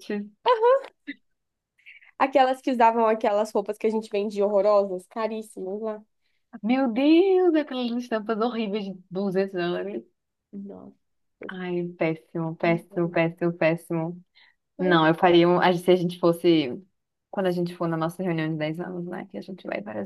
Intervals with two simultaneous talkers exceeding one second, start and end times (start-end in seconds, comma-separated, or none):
none